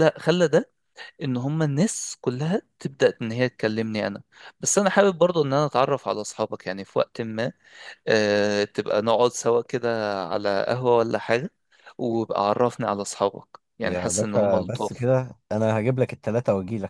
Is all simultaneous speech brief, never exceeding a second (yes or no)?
no